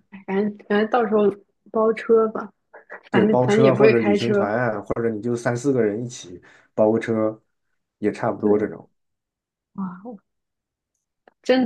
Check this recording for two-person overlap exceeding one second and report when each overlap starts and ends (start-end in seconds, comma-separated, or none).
3.1-4.5